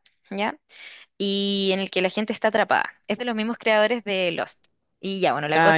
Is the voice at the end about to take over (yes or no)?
no